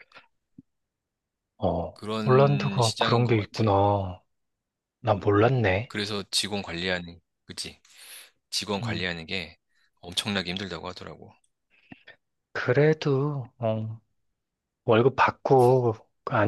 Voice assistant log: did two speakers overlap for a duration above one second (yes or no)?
yes